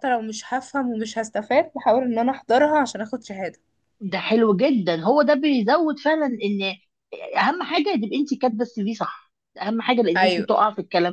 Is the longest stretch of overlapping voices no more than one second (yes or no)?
yes